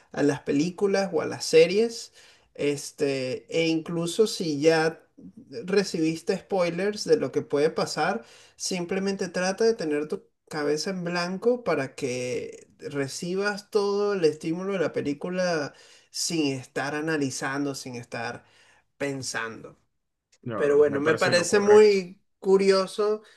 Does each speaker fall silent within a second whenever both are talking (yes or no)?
no